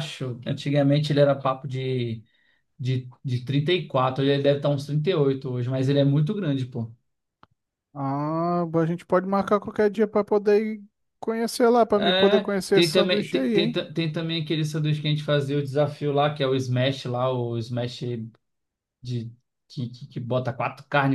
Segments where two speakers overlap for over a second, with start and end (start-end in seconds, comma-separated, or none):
11.9-13.8